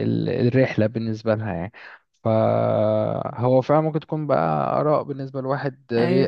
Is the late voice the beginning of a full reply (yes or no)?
yes